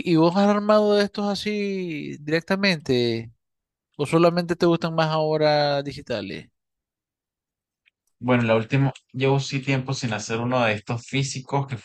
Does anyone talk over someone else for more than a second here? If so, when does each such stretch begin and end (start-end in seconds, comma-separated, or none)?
none